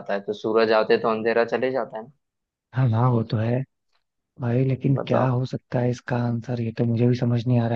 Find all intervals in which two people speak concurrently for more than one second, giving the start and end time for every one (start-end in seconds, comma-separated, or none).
none